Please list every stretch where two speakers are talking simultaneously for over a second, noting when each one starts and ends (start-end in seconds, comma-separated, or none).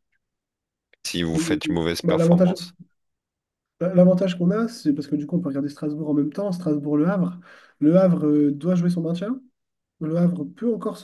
1.3-2.5